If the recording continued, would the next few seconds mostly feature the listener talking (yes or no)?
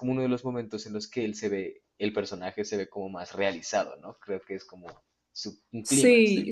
yes